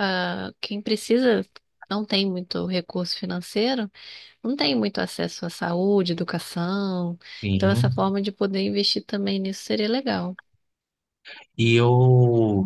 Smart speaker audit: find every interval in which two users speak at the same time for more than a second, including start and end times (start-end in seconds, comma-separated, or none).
none